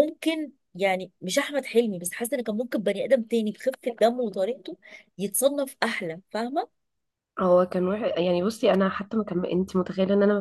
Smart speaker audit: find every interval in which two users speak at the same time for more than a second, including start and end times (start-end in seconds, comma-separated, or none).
none